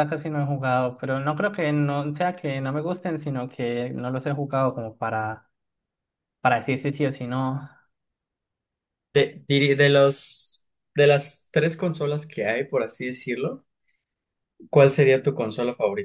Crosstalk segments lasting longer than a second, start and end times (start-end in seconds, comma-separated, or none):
none